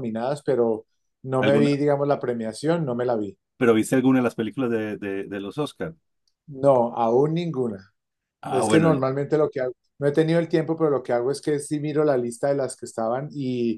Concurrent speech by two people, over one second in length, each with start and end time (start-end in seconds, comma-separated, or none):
none